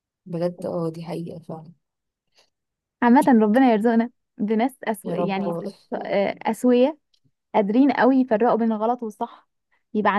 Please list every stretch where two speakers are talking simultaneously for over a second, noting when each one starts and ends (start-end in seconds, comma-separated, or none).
none